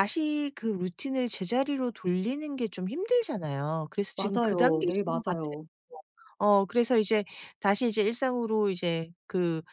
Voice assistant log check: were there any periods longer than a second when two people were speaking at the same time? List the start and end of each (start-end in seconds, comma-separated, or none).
4.2-5.5